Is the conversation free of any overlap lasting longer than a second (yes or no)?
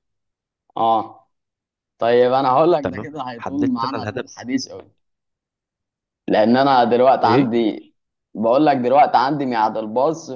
no